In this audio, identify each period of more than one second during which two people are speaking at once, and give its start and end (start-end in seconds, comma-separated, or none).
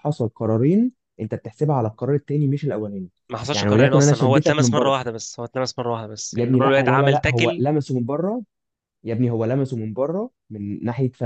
3.5-5.0, 6.3-7.6